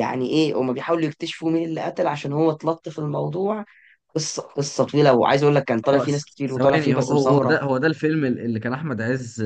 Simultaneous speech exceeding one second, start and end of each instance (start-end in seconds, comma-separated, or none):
5.8-7.6